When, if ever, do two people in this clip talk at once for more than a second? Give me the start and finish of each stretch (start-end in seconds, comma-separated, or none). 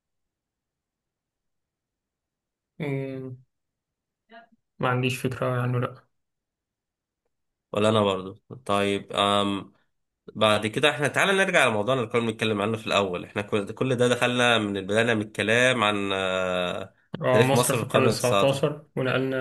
17.3-18.6